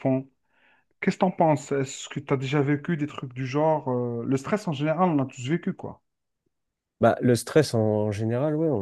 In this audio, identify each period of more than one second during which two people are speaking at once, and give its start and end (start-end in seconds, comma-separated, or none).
none